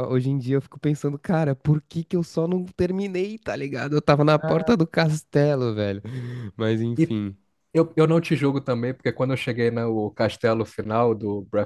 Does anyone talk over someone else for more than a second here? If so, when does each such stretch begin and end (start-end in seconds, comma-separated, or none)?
none